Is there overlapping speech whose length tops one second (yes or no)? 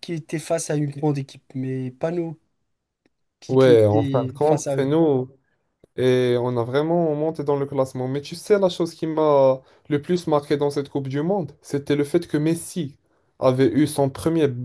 yes